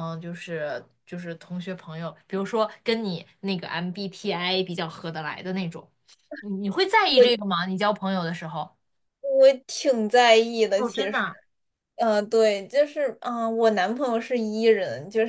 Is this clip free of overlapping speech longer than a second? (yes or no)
yes